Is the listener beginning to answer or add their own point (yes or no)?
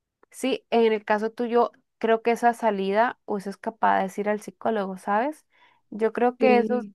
no